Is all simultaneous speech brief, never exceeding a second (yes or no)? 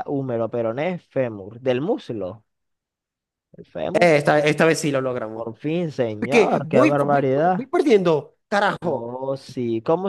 no